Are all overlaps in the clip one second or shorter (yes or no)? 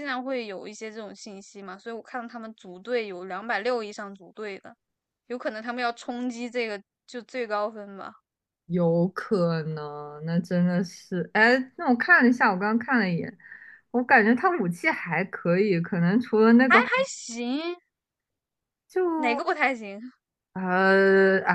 yes